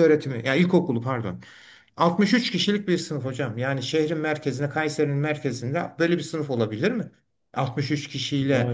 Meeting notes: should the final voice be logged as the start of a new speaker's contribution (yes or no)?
no